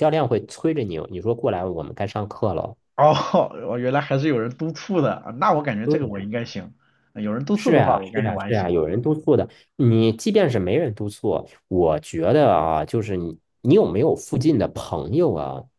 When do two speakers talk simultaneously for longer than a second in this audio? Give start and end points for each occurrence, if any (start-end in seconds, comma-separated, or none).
7.5-9.1